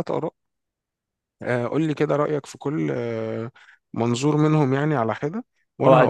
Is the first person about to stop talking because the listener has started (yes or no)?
yes